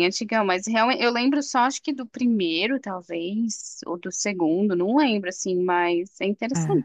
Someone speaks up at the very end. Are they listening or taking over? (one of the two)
listening